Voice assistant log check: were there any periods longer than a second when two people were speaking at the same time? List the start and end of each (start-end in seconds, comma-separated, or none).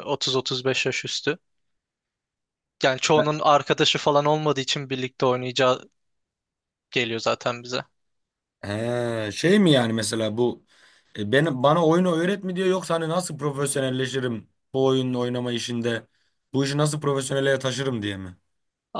none